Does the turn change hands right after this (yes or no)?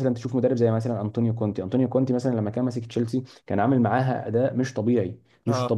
no